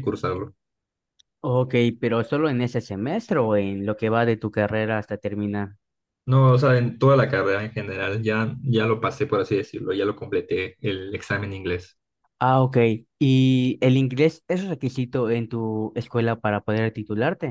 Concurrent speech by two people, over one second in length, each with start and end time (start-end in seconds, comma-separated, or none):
none